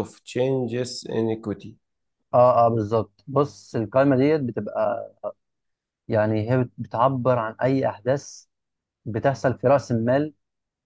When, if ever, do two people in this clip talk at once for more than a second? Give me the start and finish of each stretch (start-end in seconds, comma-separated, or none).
none